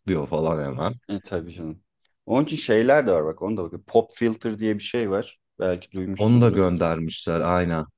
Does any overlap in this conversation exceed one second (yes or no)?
no